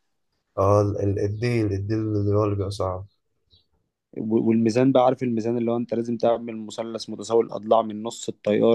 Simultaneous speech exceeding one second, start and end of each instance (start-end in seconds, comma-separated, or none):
none